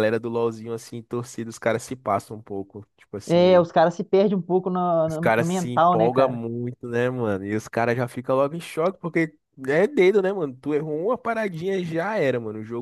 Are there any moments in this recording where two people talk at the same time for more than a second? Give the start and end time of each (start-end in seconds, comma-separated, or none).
5.1-6.4